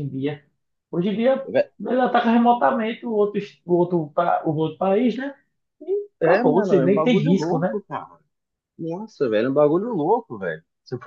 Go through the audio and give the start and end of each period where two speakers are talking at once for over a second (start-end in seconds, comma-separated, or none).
6.2-7.8